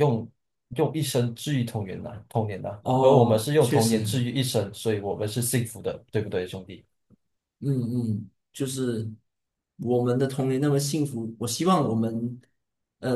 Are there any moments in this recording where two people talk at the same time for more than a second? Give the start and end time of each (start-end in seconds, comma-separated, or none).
2.8-4.2